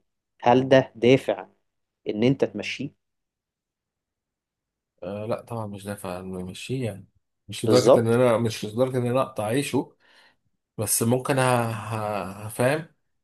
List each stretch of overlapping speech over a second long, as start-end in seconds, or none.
none